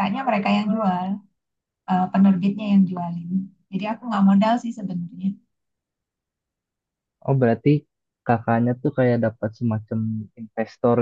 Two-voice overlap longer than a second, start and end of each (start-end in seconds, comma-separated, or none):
none